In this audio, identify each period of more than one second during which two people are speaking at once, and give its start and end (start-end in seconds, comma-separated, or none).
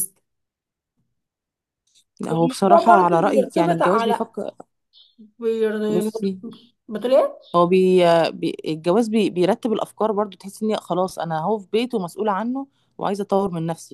2.3-4.2